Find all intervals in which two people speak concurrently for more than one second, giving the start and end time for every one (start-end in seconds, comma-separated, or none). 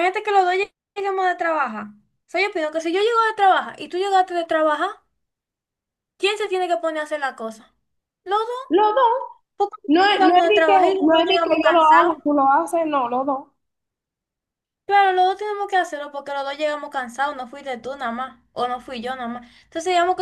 9.9-12.2